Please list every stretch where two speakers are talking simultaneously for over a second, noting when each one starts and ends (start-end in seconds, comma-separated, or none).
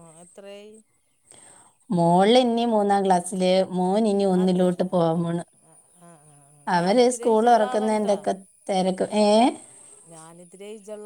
none